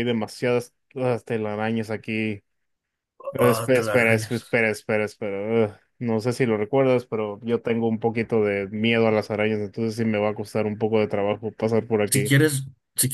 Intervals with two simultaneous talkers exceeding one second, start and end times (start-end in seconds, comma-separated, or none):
3.4-4.6